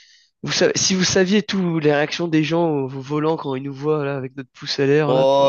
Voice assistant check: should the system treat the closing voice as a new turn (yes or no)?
yes